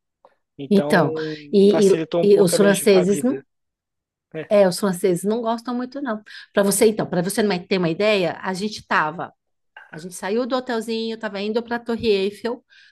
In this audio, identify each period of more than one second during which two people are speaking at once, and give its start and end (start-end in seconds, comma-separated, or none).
1.7-3.4